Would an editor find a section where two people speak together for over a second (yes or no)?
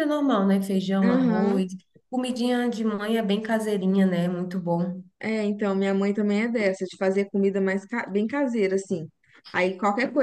no